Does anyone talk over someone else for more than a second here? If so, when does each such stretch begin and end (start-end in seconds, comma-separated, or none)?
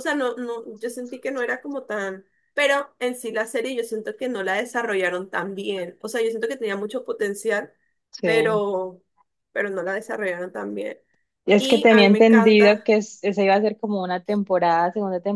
11.6-12.9